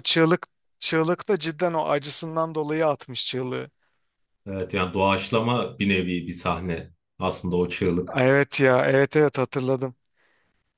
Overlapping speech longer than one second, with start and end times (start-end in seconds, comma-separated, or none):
none